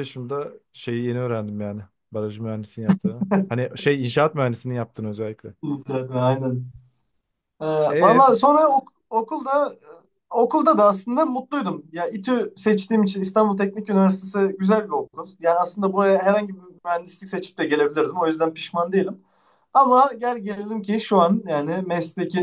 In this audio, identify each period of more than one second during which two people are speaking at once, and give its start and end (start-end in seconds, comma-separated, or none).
none